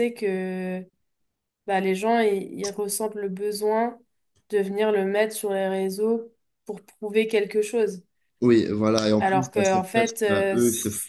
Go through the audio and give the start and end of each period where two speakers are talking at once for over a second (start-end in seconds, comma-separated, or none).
9.2-10.6